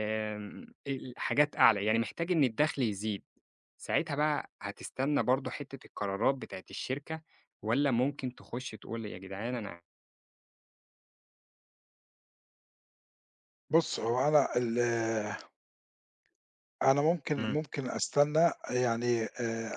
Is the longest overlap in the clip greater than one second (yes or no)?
no